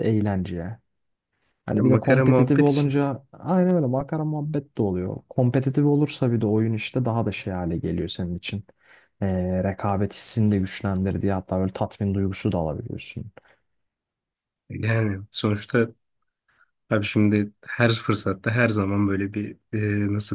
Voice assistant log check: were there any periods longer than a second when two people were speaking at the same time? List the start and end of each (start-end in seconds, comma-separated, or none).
1.7-3.0